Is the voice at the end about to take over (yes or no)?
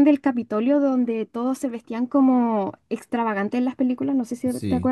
yes